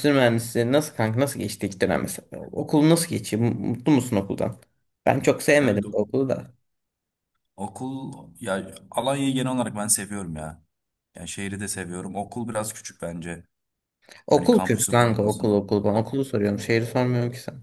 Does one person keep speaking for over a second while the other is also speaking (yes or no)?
yes